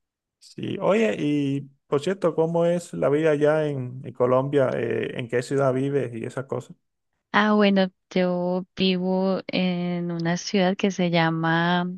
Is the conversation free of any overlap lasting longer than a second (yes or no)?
yes